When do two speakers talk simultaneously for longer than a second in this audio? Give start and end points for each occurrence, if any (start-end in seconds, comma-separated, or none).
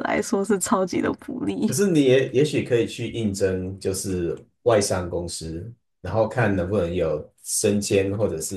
none